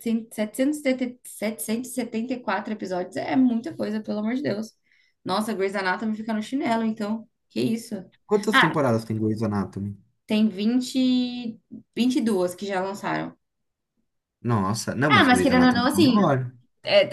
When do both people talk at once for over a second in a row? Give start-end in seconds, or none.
15.1-16.3